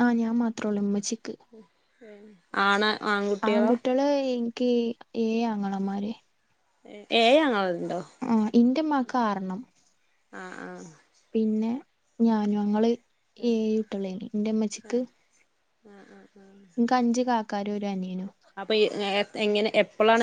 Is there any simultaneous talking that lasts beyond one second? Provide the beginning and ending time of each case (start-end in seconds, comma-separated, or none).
none